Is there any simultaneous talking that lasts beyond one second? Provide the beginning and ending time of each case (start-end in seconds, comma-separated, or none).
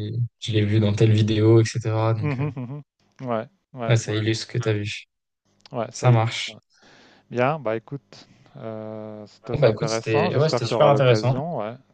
9.5-11.3